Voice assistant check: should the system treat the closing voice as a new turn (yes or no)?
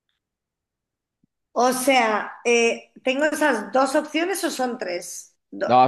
yes